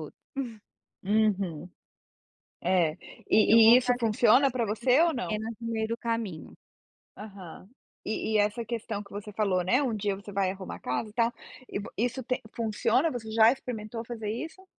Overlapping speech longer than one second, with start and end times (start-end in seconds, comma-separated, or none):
3.4-5.4